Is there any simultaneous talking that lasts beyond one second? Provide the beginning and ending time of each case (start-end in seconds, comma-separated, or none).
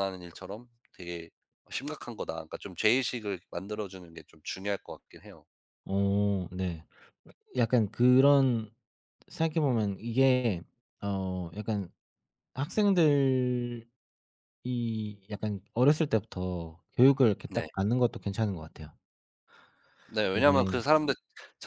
none